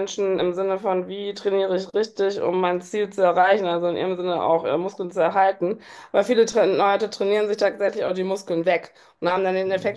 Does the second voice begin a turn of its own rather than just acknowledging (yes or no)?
no